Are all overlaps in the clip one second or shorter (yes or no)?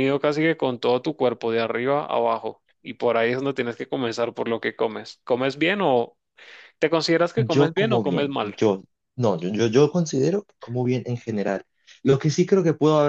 no